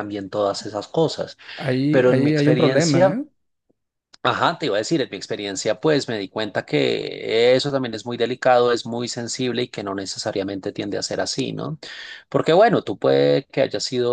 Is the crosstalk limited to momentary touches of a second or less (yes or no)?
no